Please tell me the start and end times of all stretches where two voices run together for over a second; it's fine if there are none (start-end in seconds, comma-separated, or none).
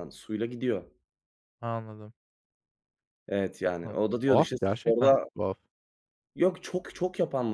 3.8-5.2